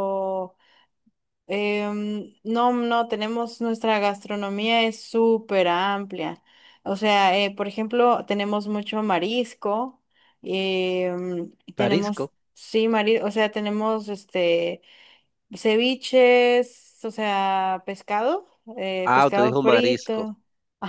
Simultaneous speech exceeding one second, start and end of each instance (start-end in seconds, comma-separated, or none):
19.0-20.2